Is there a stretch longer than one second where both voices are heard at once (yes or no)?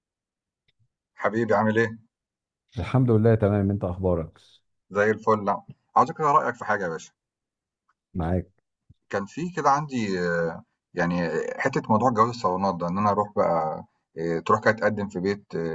no